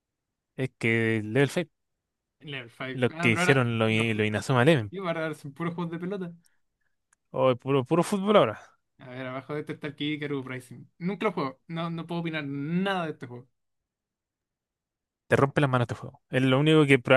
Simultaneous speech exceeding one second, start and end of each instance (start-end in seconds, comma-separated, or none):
2.9-4.3